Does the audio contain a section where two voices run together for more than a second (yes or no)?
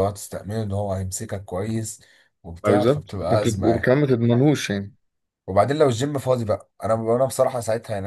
yes